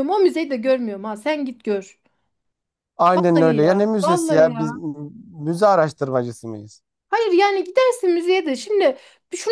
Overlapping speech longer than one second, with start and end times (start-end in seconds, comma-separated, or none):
3.1-4.8